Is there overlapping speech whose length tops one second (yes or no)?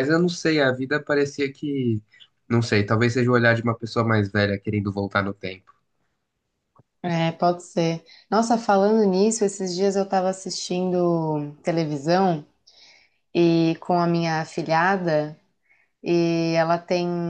no